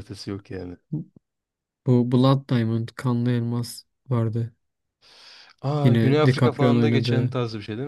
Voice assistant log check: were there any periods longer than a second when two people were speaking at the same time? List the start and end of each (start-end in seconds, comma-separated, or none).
5.8-7.3